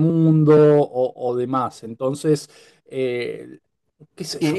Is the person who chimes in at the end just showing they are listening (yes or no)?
no